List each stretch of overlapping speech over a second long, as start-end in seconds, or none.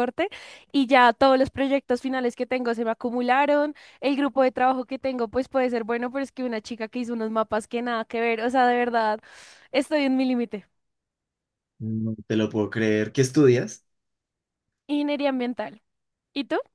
none